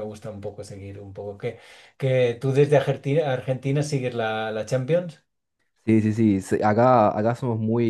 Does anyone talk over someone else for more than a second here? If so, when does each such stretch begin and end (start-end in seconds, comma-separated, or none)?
none